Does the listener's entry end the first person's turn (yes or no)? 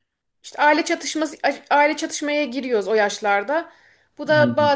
no